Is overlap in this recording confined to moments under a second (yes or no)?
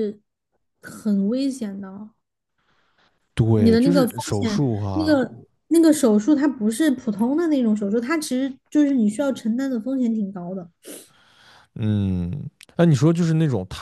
no